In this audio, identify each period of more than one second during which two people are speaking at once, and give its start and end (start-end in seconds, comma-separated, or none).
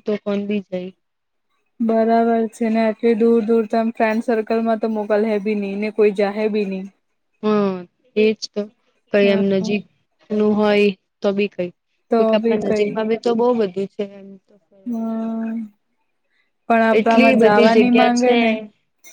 17.0-18.4